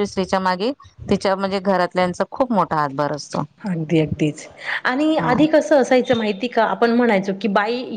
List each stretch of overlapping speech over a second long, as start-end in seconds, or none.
none